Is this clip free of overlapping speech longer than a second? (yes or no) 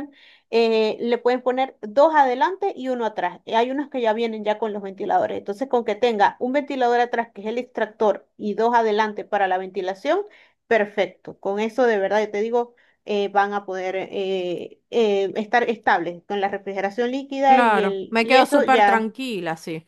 no